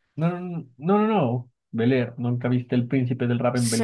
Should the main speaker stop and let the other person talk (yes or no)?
yes